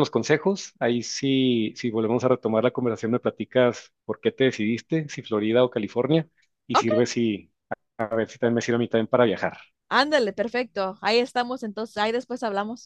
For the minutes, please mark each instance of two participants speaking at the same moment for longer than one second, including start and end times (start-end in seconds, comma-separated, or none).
none